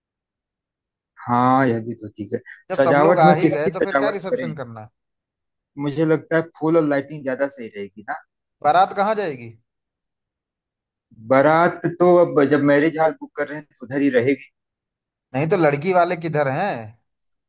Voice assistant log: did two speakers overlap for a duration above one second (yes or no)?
yes